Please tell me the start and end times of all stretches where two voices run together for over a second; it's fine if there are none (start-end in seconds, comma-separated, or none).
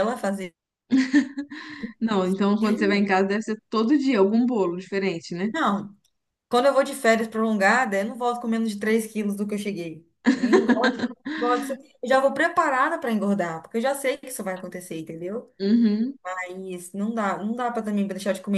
none